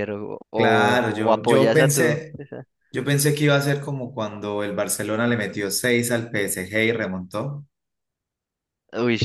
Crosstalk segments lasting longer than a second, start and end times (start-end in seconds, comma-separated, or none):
0.5-2.3